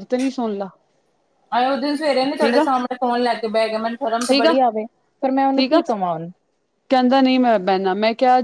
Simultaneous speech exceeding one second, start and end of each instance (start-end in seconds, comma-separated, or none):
none